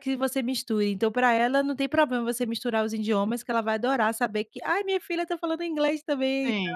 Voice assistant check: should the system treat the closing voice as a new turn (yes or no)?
yes